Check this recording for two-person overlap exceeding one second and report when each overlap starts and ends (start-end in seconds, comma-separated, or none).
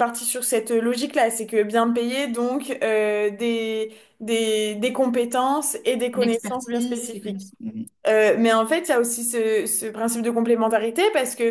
6.1-7.5